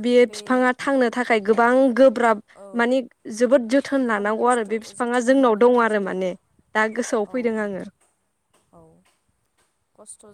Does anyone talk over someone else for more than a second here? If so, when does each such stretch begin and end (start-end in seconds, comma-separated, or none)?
4.1-6.2